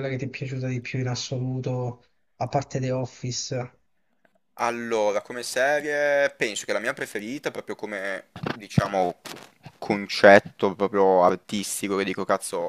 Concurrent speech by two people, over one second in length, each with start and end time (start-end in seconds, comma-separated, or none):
none